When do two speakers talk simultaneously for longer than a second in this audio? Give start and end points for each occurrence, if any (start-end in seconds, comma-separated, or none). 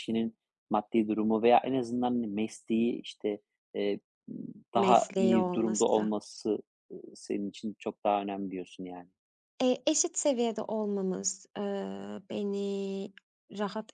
4.7-6.1